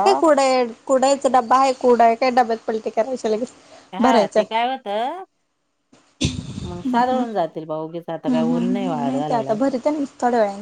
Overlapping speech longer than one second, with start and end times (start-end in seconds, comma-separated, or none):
none